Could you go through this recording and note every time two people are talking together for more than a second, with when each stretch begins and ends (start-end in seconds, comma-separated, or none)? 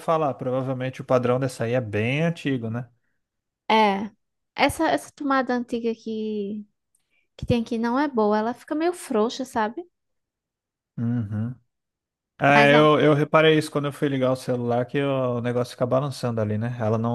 none